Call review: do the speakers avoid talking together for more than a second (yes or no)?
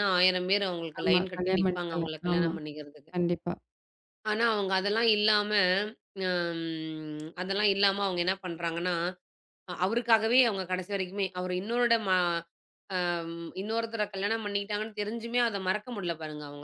no